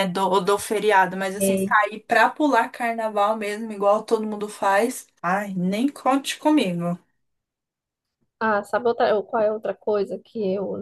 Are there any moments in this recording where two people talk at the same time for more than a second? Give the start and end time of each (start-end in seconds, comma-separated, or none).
none